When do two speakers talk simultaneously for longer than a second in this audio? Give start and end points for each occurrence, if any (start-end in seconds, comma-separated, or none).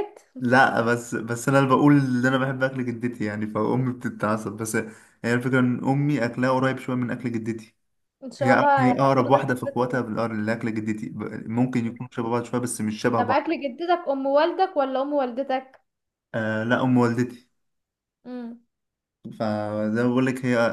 8.4-10.1